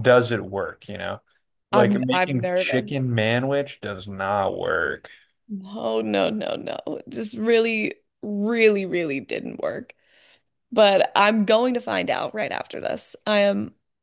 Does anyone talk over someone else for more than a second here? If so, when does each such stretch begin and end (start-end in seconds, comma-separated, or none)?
1.7-3.0